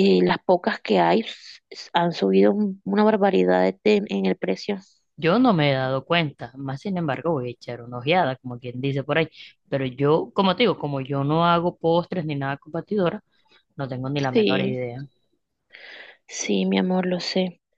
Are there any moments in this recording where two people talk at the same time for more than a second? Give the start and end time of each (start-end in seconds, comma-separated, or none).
none